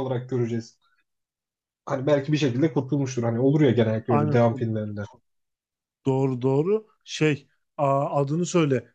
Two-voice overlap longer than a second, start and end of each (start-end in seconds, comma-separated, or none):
none